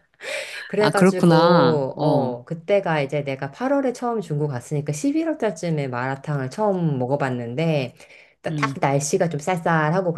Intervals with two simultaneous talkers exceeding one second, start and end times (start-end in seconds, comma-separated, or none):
0.8-2.4